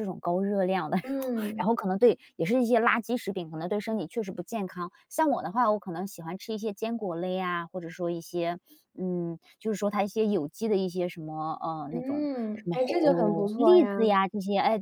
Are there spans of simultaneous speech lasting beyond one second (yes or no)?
yes